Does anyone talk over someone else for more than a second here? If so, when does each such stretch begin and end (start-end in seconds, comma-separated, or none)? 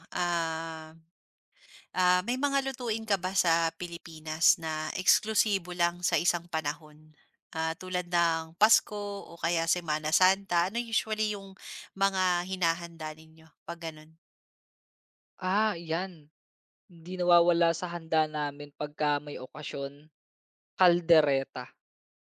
none